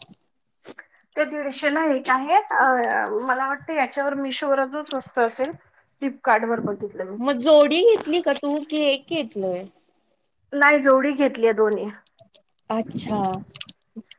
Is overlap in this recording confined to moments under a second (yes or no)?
yes